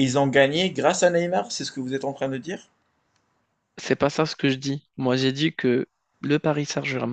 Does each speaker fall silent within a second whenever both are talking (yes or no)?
yes